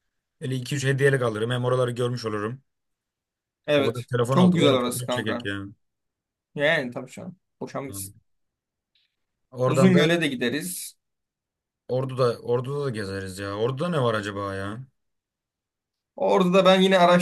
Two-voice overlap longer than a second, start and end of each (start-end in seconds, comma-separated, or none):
3.8-5.5